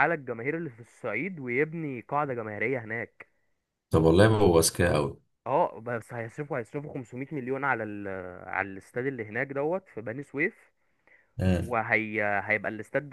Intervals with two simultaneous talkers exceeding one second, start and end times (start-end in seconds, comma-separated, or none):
none